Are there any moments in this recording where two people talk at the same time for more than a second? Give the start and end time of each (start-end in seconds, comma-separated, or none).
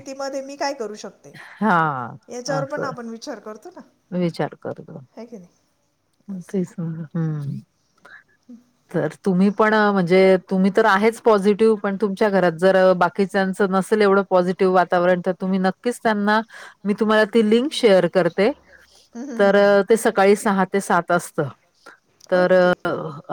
none